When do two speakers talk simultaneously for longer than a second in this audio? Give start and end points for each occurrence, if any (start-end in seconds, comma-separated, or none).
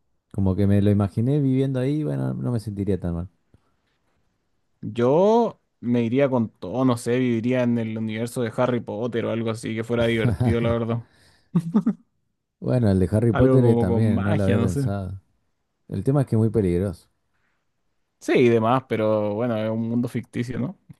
13.3-14.9